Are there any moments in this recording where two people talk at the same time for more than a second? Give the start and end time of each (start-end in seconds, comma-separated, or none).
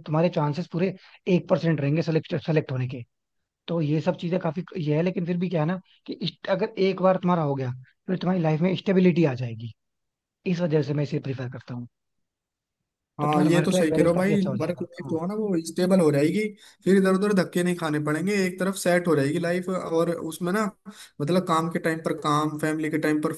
13.2-15.2